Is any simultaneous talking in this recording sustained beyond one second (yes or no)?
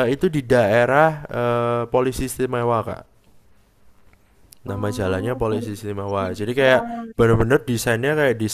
yes